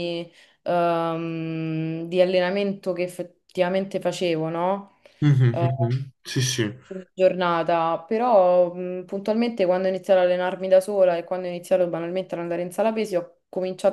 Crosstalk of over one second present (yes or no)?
no